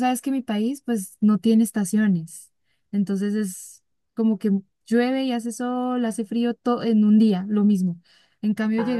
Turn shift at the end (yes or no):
no